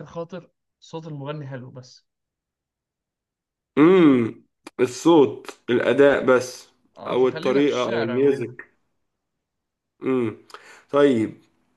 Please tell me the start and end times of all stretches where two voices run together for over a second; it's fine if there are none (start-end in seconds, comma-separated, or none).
7.1-8.6